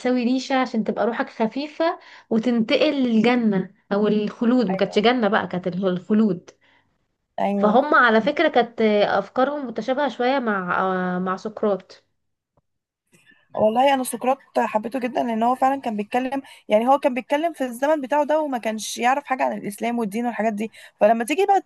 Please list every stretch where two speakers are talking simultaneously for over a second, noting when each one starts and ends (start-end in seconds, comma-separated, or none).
none